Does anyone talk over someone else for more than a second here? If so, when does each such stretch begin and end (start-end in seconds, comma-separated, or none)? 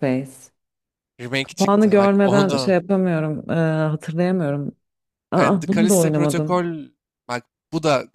1.4-2.8, 5.4-6.6